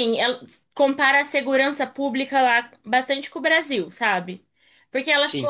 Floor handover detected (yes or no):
no